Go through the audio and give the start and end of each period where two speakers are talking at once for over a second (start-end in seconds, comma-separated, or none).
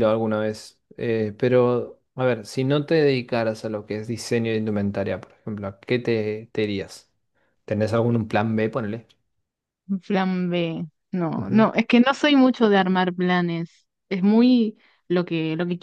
none